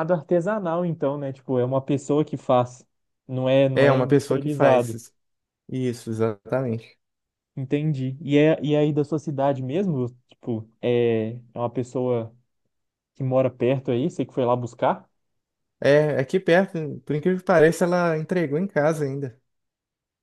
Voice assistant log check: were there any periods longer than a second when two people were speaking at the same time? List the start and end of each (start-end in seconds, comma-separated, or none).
3.8-5.0